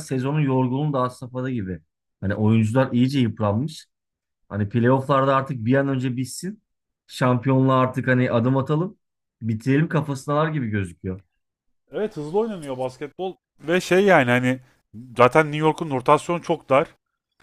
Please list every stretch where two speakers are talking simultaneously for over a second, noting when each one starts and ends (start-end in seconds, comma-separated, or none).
none